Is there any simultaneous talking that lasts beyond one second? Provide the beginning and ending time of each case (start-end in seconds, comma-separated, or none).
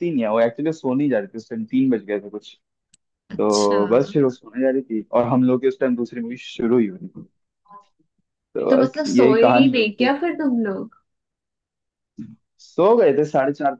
8.7-10.1